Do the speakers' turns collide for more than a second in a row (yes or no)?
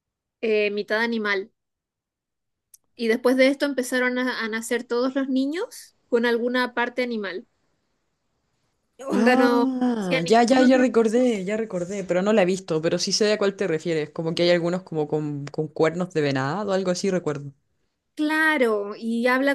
yes